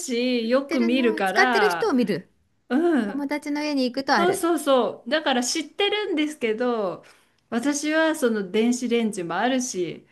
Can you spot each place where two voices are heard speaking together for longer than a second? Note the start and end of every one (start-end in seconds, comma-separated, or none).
0.7-1.9